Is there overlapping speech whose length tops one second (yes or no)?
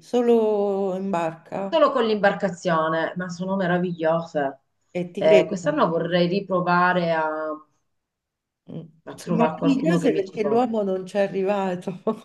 yes